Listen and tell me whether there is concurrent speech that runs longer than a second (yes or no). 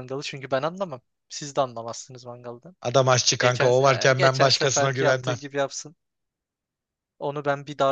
yes